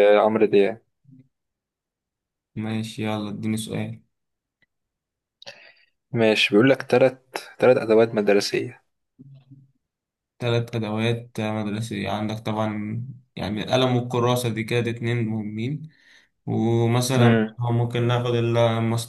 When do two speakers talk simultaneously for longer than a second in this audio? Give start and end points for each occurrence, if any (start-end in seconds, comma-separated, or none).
none